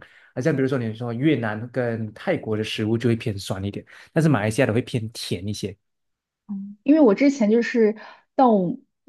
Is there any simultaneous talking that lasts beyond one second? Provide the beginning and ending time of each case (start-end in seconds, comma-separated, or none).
none